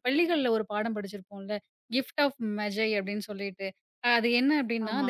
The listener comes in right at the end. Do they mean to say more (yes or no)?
no